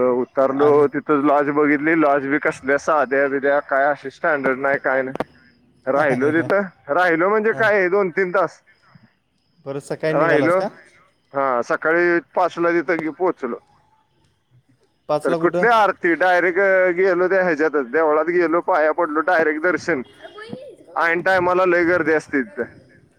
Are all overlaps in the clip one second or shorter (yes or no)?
yes